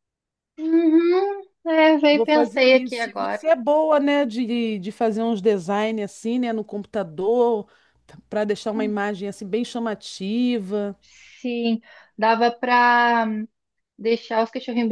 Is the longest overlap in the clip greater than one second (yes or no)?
yes